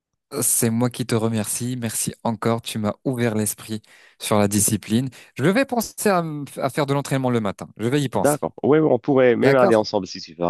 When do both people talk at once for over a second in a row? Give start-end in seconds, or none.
none